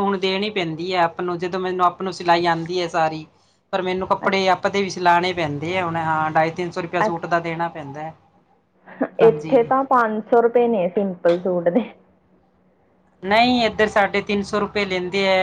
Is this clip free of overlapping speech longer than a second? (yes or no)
yes